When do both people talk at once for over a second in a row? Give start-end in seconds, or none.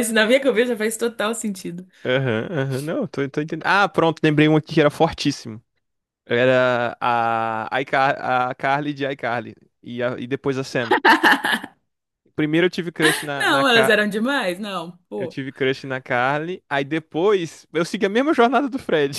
none